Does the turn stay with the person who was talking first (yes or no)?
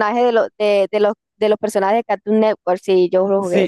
no